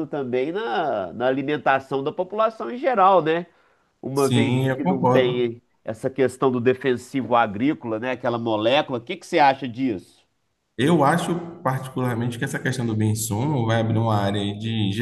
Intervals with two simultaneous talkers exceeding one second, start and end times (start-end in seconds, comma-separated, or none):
4.2-5.5